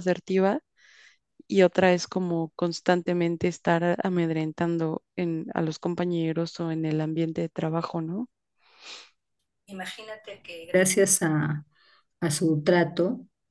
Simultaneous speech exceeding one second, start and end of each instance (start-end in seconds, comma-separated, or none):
none